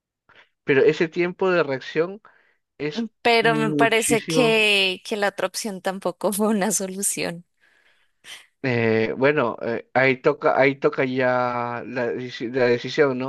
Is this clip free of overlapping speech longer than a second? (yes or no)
no